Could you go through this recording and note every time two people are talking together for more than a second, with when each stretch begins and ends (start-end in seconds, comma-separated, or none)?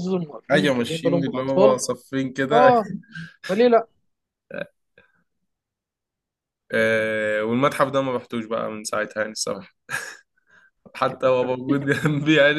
0.5-1.8